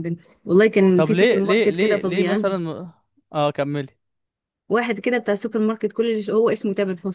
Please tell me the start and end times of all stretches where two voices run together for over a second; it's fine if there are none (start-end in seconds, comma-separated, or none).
0.9-2.4